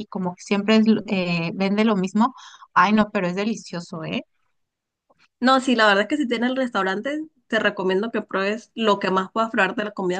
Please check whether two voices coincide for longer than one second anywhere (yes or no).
no